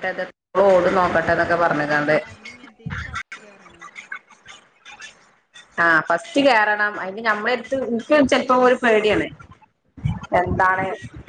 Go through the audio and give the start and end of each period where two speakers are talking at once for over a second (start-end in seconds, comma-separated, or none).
none